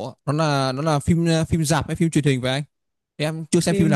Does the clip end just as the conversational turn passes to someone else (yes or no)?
yes